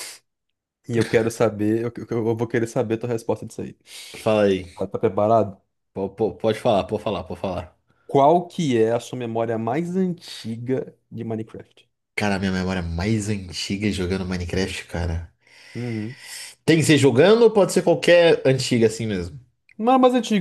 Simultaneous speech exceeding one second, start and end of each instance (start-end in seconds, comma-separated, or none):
none